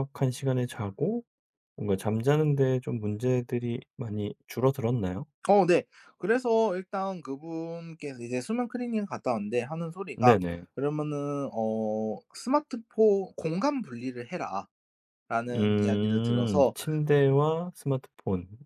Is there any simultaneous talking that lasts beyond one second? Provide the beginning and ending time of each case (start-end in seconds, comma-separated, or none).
15.5-16.7